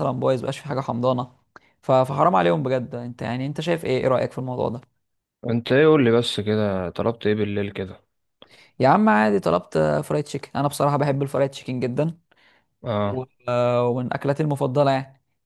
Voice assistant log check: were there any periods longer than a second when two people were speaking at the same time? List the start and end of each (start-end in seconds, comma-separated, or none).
none